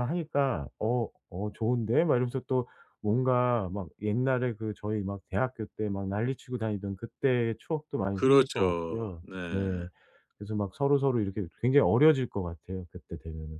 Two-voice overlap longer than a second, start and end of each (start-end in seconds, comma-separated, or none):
8.1-9.9